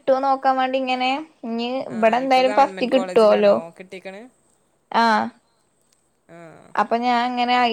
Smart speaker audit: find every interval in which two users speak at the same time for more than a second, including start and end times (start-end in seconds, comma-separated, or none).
1.9-3.5